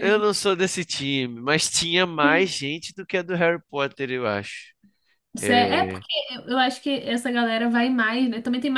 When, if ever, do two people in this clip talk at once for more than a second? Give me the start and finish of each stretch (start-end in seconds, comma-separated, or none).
none